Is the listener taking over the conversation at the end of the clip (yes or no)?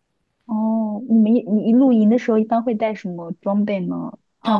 yes